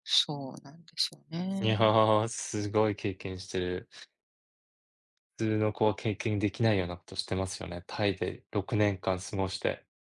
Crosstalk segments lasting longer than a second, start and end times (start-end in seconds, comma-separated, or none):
none